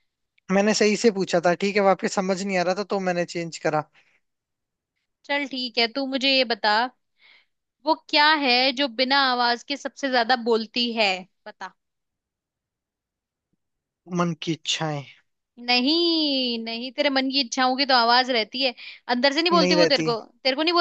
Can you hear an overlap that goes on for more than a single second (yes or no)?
no